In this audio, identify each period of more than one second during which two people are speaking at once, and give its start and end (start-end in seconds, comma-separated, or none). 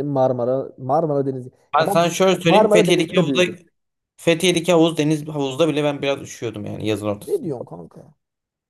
1.8-3.4